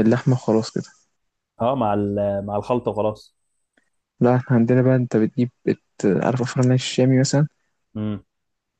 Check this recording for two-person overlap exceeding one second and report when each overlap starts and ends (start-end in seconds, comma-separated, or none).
none